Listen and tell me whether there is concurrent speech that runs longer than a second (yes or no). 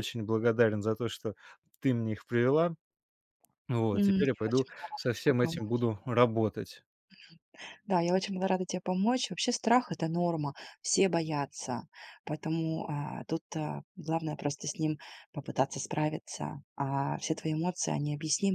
yes